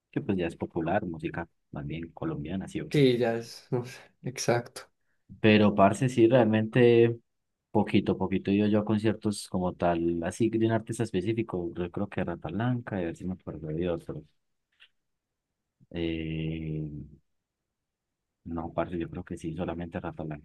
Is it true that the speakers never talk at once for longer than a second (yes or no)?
yes